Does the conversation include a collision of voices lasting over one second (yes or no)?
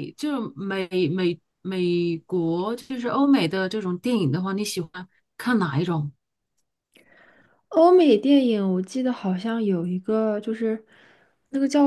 no